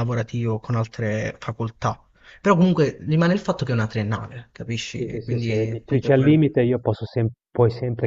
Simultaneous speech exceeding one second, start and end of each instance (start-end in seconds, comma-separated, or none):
5.0-6.4